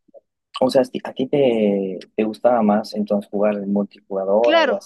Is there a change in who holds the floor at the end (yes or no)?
yes